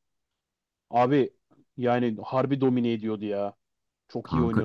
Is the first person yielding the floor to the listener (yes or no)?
yes